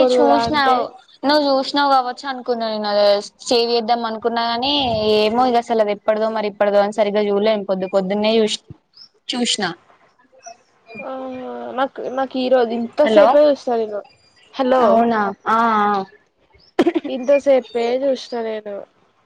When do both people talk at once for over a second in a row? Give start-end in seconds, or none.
none